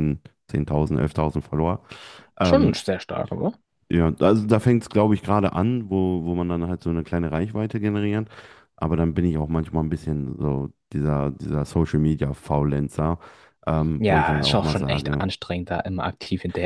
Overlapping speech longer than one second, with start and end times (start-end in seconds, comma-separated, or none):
14.0-15.2